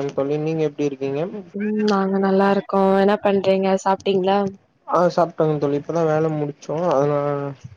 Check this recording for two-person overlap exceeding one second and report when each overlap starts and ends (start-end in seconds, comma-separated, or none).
none